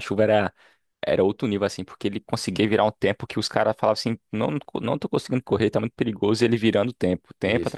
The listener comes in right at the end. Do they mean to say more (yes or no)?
yes